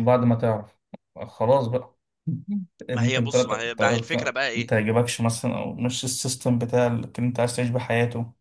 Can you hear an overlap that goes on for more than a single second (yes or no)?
yes